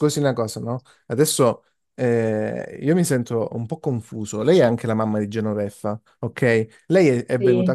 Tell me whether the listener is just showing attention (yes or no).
yes